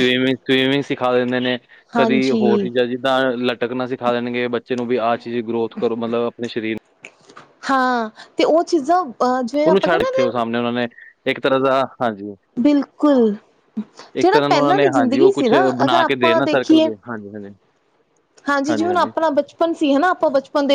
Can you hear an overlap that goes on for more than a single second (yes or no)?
yes